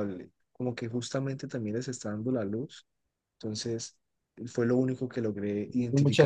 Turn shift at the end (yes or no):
yes